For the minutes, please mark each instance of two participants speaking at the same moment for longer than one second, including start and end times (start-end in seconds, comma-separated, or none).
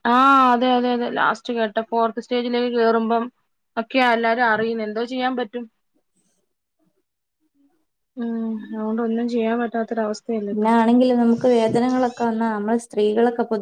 none